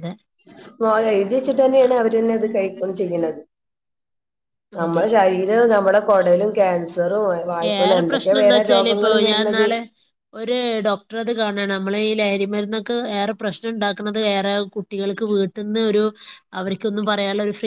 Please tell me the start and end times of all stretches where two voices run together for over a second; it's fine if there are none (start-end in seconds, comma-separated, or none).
none